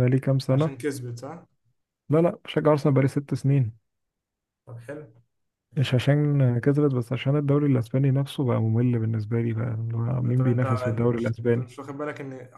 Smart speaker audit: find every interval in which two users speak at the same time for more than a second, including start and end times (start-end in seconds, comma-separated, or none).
10.2-11.7